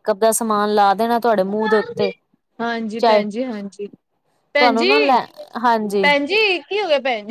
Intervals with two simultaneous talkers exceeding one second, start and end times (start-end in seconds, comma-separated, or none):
none